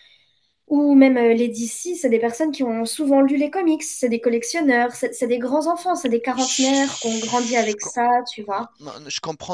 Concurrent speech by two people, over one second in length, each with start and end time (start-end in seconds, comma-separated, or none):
6.3-7.7